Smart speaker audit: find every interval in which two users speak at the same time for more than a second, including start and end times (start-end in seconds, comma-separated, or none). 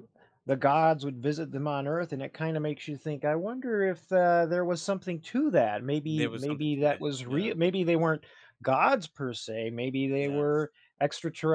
6.0-7.5